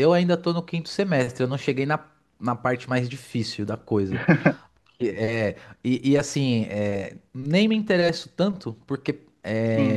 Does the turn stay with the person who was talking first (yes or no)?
yes